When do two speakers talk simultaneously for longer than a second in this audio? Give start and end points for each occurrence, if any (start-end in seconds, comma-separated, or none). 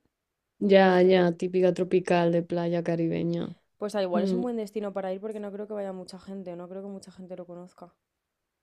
none